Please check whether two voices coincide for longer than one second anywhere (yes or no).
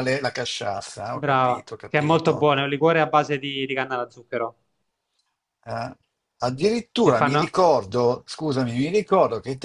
yes